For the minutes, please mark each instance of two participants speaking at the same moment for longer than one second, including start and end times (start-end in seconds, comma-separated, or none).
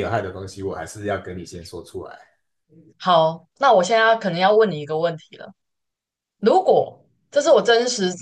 none